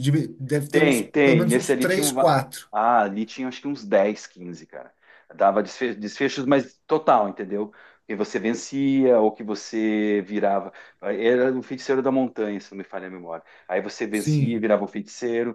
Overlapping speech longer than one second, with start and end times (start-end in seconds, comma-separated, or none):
0.7-2.7